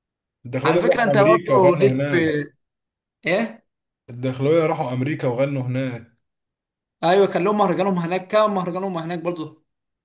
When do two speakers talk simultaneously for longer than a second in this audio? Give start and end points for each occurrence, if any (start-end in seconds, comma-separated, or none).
0.7-2.3